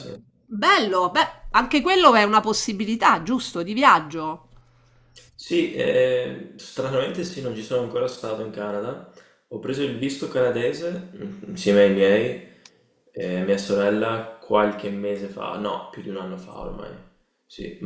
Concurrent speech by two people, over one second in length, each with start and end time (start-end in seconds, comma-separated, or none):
none